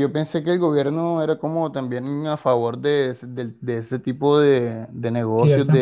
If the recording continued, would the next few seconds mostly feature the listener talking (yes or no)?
yes